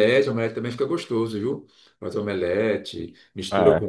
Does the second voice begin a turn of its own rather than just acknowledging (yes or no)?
no